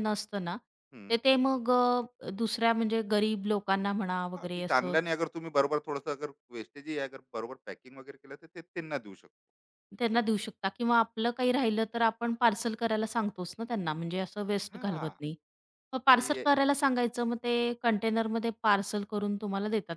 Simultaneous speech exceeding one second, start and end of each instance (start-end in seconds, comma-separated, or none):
none